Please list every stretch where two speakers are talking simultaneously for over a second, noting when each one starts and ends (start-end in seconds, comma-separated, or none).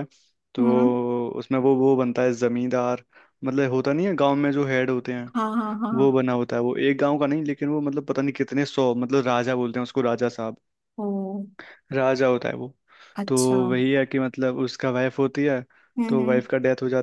none